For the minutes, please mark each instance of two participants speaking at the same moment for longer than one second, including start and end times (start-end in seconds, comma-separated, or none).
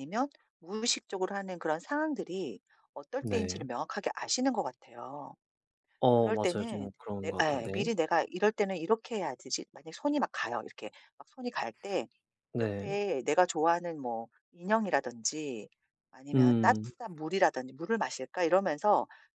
6.2-7.9